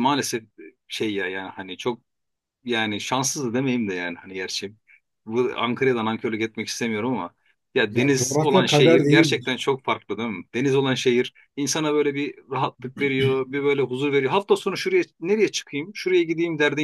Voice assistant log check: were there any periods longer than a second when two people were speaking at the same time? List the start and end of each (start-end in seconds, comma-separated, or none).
7.9-9.6